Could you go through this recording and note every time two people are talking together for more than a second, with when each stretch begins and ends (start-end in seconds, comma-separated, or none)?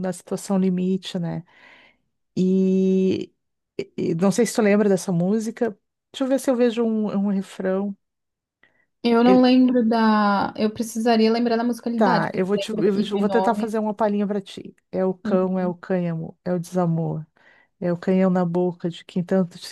11.9-13.8